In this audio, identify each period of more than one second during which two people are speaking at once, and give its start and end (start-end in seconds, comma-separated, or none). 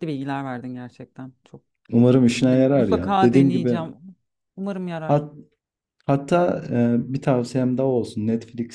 2.4-3.8